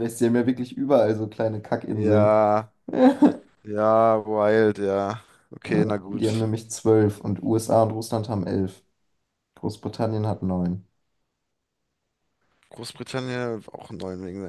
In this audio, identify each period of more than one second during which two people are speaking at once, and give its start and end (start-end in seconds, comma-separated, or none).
none